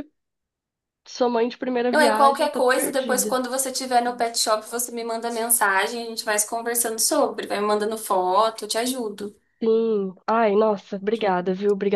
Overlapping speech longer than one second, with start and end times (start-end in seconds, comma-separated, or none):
1.9-3.4